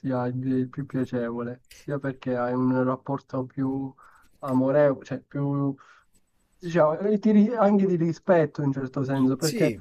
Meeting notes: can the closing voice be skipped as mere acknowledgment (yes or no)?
yes